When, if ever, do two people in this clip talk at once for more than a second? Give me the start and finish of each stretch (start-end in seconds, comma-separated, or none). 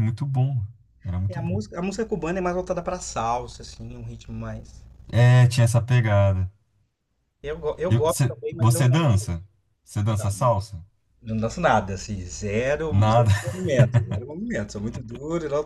7.9-9.2